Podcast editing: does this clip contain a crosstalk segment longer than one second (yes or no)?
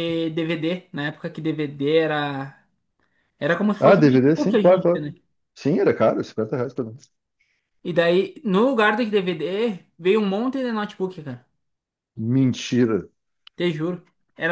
yes